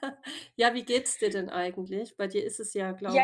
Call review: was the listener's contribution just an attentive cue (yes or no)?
no